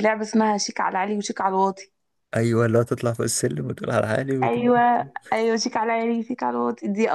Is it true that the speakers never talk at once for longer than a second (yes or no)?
yes